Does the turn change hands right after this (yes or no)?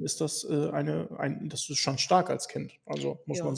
yes